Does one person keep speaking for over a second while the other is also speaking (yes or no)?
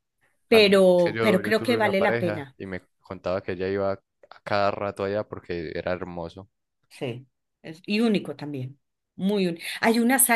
yes